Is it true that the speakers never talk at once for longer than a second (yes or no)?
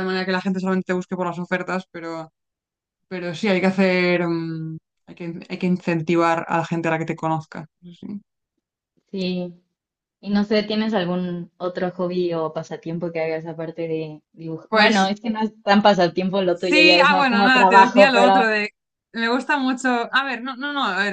no